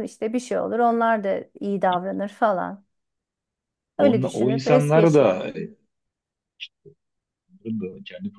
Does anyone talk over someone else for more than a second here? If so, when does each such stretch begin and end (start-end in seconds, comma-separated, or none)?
4.0-5.4